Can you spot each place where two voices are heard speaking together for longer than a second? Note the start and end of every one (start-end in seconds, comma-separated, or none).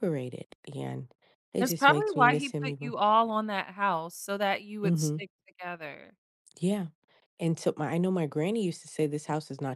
1.6-2.9